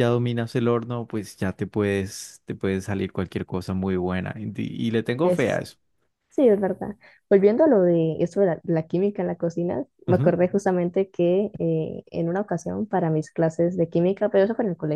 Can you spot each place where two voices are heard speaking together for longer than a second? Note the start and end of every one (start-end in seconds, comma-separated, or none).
none